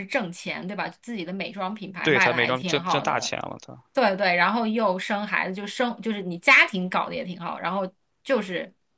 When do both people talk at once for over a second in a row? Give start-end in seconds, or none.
2.0-3.4